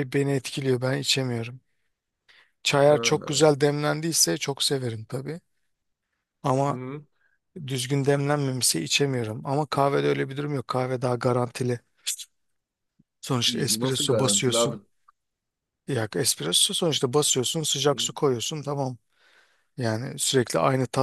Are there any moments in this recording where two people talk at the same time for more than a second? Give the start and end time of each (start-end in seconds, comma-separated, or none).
13.4-14.8